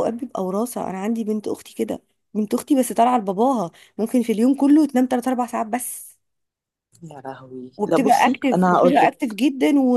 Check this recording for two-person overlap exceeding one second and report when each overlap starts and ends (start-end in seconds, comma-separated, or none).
7.8-9.4